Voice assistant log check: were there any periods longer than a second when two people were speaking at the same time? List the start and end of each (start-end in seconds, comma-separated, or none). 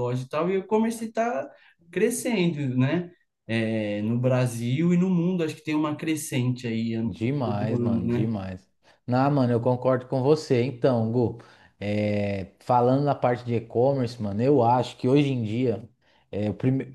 7.0-8.4